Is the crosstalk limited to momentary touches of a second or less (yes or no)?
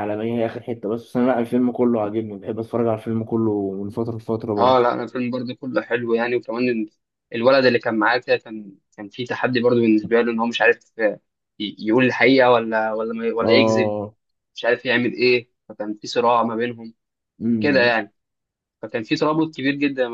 yes